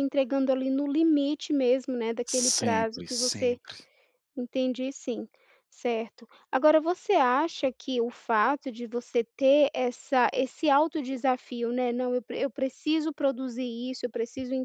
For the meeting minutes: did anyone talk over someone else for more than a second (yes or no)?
yes